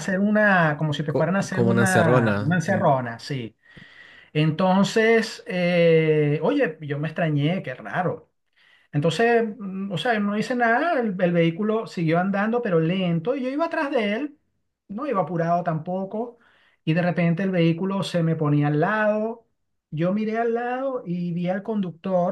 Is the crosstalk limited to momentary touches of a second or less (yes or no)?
no